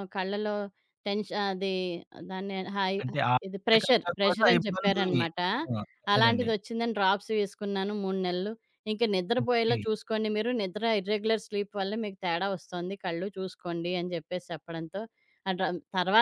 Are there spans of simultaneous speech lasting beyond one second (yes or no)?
yes